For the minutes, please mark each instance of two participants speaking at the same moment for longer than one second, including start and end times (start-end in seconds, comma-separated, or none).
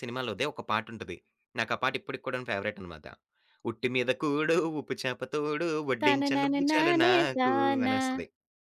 6.0-8.0